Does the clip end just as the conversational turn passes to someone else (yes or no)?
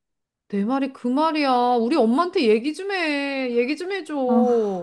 yes